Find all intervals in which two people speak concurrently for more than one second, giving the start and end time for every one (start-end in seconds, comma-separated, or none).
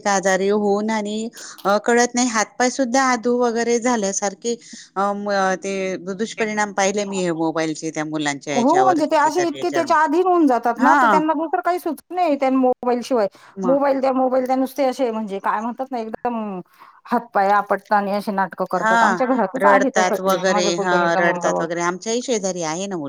8.6-9.9, 19.6-21.6